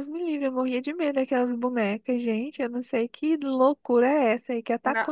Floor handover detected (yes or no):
yes